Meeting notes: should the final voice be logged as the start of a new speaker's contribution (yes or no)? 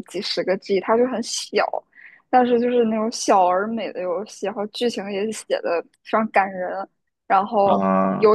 no